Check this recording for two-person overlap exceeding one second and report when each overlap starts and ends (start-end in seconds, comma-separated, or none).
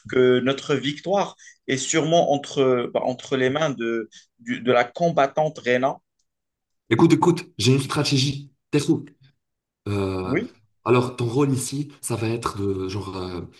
none